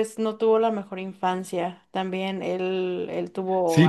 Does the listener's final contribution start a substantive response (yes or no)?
yes